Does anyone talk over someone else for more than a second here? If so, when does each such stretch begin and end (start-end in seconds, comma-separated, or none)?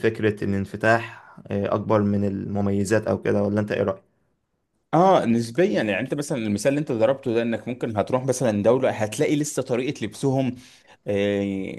none